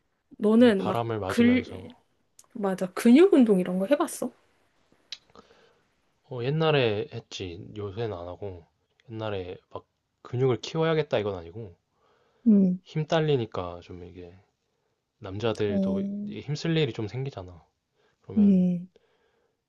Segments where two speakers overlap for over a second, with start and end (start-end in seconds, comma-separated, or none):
0.6-1.9